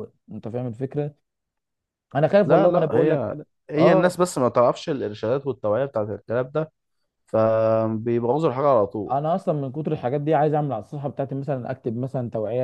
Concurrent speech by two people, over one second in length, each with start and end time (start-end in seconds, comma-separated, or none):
2.4-4.2